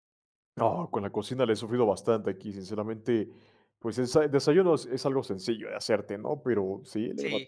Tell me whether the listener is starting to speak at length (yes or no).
no